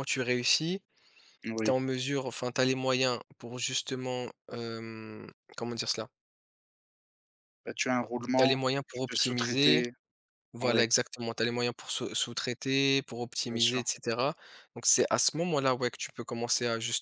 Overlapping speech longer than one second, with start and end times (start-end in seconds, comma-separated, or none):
8.3-9.8